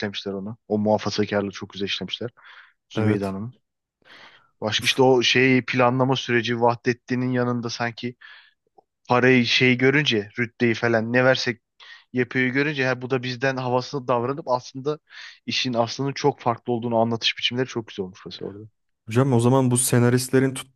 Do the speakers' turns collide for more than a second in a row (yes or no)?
no